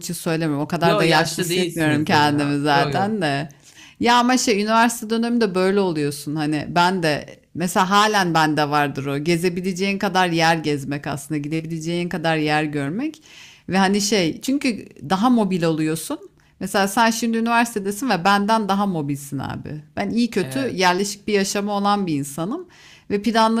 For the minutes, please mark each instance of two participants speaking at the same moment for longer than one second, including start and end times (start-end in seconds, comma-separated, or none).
0.8-3.1